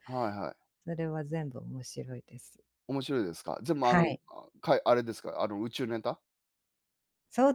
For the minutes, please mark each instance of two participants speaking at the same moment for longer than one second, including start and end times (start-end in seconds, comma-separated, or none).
none